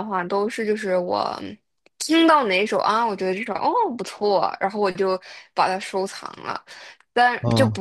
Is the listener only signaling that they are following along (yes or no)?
yes